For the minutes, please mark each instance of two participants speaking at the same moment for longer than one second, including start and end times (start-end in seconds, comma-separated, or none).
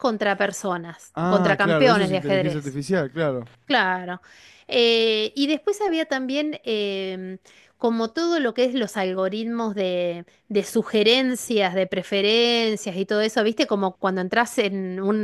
1.1-2.8